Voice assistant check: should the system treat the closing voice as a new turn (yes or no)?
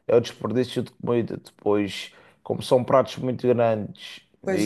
no